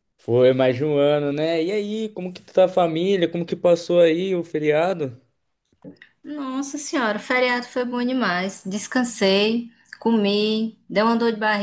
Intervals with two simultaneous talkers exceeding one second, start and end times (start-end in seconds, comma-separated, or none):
none